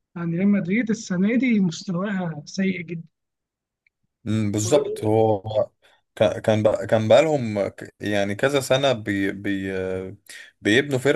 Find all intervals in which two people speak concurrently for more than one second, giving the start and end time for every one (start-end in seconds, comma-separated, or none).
none